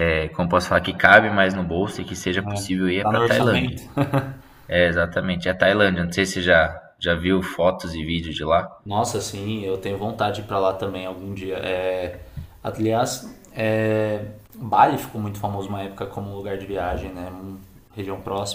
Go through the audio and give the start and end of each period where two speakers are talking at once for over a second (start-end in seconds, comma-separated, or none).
2.5-3.8